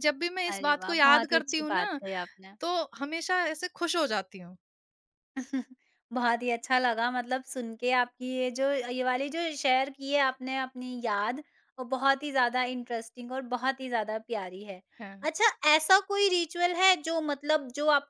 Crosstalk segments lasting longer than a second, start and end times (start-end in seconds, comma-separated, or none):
0.5-2.0